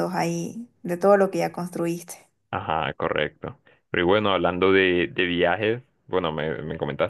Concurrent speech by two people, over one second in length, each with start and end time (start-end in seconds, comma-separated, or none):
none